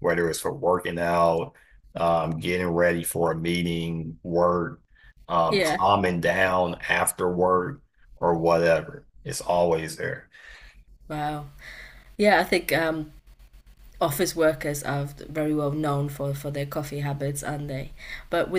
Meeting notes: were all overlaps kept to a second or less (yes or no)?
yes